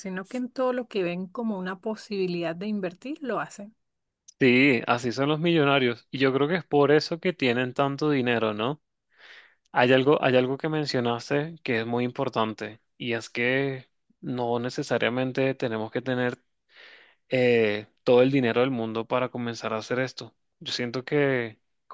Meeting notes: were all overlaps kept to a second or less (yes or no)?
yes